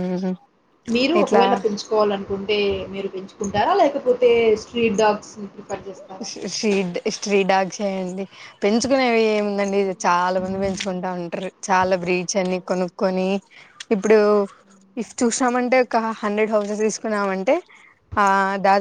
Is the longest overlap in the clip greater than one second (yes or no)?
no